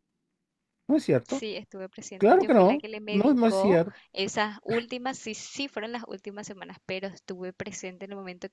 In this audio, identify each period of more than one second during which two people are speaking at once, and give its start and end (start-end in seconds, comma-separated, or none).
2.2-4.0